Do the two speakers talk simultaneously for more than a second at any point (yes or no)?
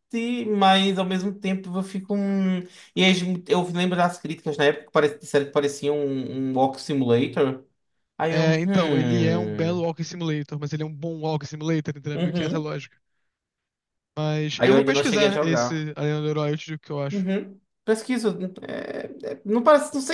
yes